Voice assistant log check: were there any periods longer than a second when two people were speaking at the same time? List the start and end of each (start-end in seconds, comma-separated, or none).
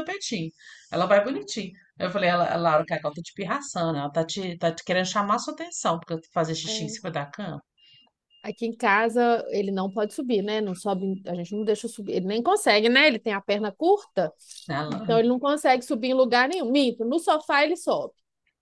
none